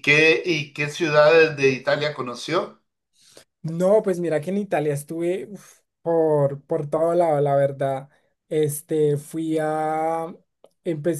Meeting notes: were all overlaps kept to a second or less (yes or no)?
yes